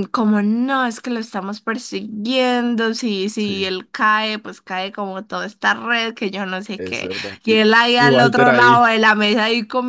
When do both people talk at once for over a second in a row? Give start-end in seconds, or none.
6.8-8.9